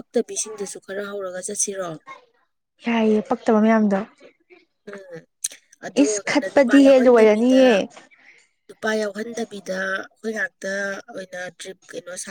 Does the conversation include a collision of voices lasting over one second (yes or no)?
yes